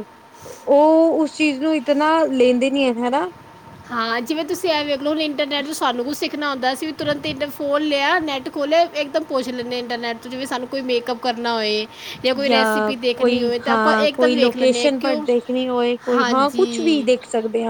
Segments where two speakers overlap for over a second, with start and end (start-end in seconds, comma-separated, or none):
12.5-15.3